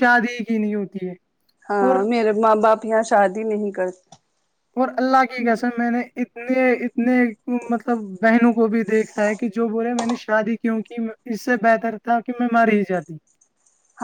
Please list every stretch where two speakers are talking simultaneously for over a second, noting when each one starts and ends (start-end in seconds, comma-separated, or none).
none